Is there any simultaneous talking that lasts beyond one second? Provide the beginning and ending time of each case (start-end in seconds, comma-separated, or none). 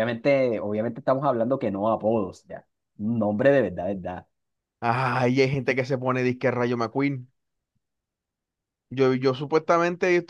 none